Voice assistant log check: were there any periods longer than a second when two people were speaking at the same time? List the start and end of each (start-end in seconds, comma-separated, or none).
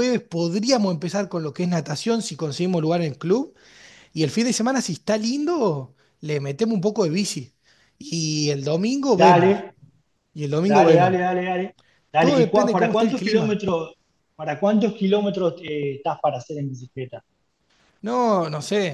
12.2-13.6